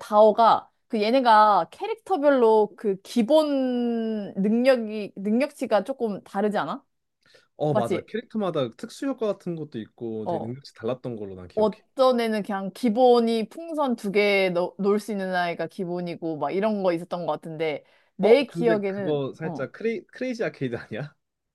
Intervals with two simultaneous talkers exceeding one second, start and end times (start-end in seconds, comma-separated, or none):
18.2-19.7